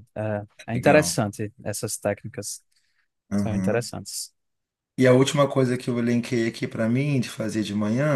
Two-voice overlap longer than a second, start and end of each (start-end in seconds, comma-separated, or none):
none